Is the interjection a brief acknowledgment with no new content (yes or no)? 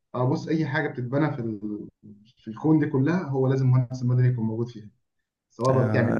yes